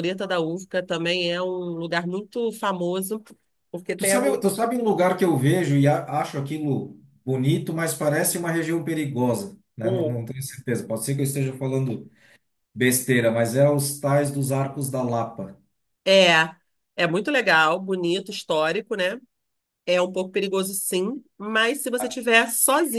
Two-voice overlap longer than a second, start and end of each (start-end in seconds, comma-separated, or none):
none